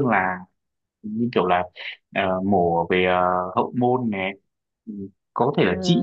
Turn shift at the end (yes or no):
no